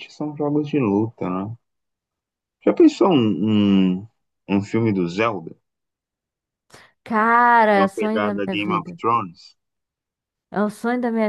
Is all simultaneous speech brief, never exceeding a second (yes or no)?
no